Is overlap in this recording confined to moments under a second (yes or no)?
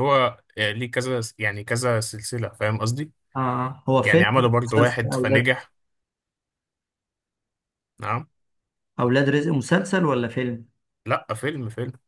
no